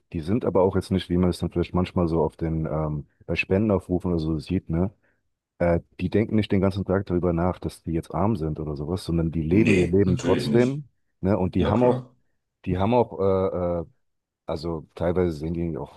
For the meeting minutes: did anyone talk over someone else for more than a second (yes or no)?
yes